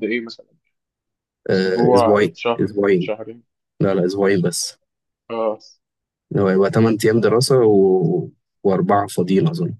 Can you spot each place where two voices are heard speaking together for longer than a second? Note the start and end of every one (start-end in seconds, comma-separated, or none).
1.5-3.1